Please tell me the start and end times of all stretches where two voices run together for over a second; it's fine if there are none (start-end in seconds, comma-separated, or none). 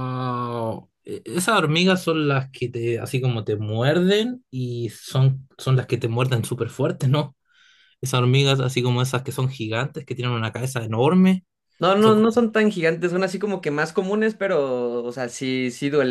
none